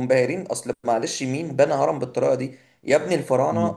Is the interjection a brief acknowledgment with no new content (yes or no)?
yes